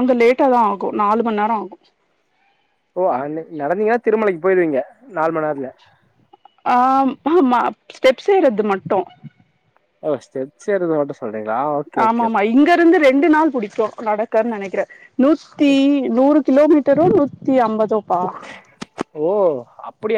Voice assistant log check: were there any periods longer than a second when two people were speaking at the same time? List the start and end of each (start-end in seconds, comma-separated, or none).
none